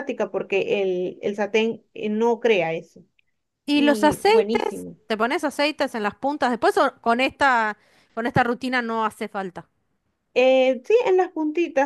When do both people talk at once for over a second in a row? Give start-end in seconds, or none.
3.7-5.0